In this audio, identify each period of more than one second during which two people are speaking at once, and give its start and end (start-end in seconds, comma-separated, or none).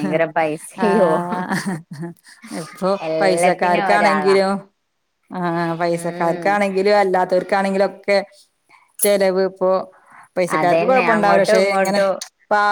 3.1-4.4, 10.6-12.0